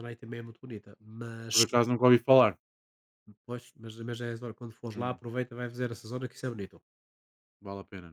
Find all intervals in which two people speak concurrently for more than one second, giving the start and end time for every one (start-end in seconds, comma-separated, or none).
none